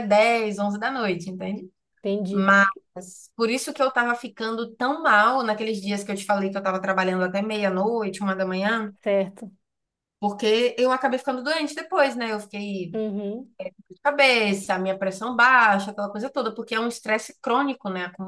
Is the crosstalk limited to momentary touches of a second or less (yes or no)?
yes